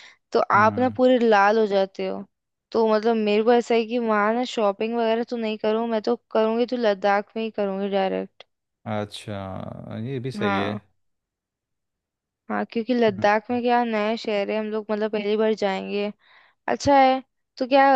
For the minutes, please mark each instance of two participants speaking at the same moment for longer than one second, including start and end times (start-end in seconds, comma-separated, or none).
none